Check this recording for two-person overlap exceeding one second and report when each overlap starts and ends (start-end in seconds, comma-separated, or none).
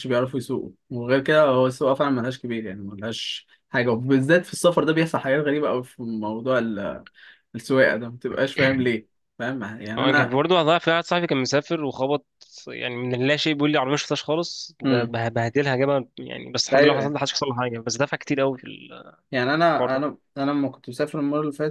none